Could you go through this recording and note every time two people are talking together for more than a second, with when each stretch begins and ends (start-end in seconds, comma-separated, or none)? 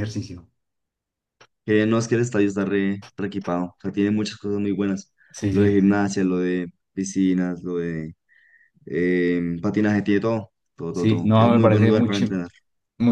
10.9-12.4